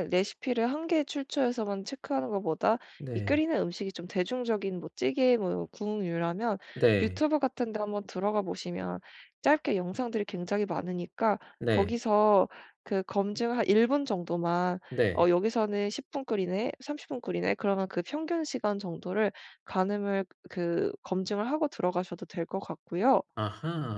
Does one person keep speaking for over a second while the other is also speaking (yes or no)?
no